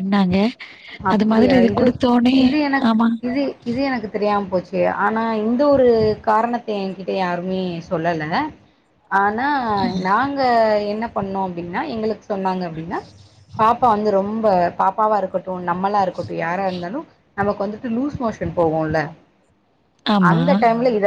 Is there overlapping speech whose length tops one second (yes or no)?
no